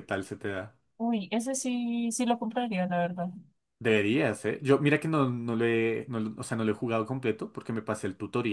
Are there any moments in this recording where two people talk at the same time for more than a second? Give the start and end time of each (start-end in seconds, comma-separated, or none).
none